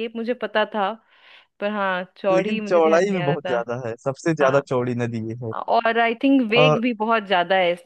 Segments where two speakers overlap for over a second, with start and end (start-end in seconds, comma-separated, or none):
2.3-3.6